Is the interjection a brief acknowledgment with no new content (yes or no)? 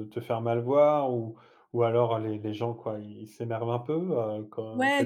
no